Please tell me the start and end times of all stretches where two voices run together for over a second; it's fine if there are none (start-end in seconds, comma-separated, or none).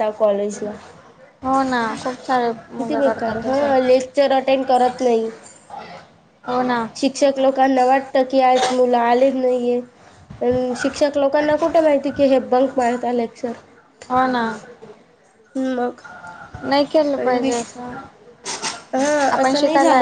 none